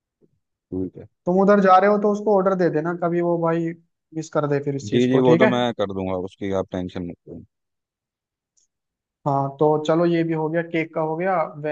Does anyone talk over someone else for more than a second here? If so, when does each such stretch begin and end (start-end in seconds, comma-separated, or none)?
none